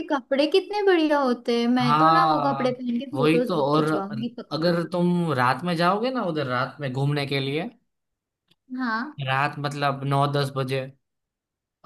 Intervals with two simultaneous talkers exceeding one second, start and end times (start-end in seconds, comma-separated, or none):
1.8-3.9